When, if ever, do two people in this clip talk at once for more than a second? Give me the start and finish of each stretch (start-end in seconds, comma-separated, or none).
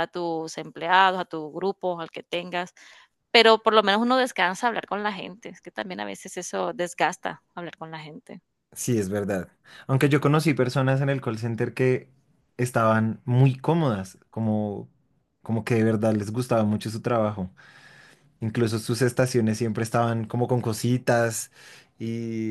none